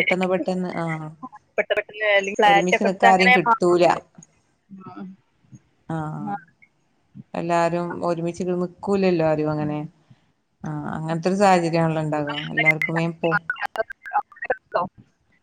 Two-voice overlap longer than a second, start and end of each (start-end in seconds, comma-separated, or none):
2.5-3.9